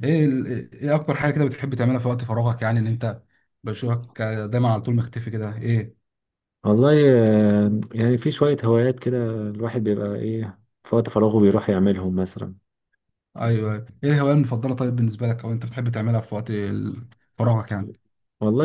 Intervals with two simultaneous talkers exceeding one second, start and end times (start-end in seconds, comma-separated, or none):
none